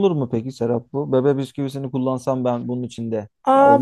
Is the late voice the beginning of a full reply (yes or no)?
yes